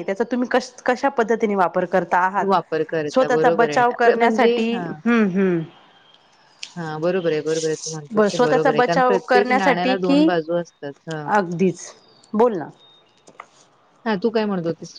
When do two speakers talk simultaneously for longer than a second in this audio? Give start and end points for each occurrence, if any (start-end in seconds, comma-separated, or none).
3.1-4.8, 8.2-10.3